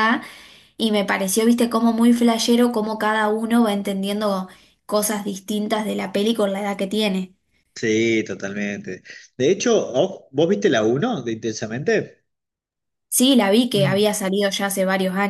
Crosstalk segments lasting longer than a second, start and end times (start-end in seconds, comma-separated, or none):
none